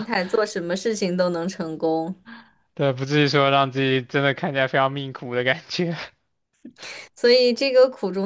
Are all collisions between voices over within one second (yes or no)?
yes